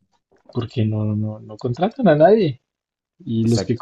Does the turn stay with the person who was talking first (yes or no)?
yes